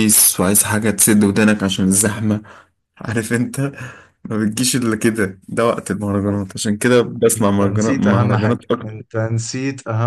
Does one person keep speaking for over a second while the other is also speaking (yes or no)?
yes